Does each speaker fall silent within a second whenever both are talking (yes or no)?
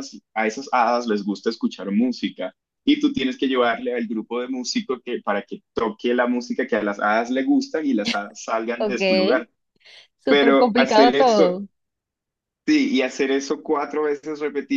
no